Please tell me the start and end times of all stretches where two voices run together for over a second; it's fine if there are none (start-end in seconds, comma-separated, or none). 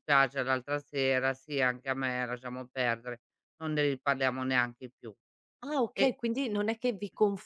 none